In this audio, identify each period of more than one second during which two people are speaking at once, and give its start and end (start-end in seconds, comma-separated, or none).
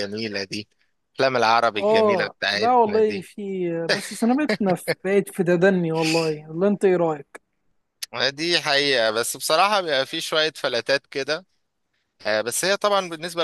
1.8-3.3